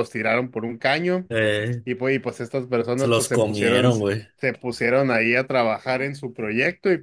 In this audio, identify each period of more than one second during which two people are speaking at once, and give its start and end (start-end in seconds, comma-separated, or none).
3.0-4.2